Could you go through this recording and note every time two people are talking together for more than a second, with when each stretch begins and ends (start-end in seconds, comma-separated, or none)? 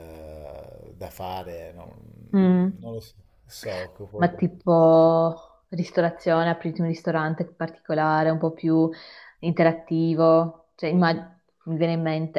none